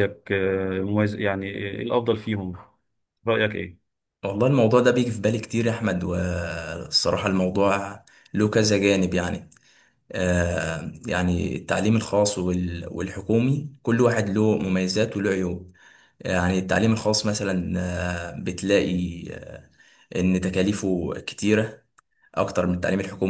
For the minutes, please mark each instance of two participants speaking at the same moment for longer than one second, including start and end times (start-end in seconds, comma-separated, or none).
none